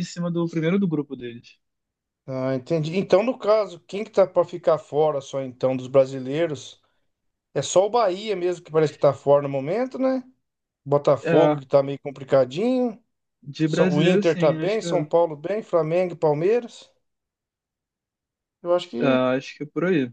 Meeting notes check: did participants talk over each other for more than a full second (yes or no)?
yes